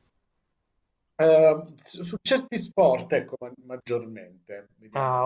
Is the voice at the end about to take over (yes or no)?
yes